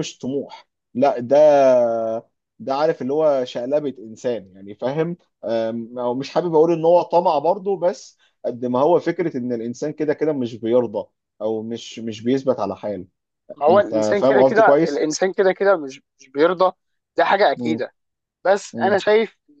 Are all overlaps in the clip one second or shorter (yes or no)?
no